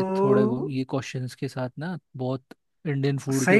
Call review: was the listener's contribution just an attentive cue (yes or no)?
no